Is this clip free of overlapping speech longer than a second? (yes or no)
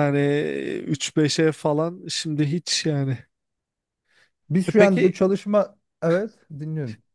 yes